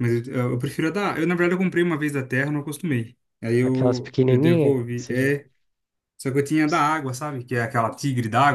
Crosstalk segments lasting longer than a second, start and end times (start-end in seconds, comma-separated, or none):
3.6-5.3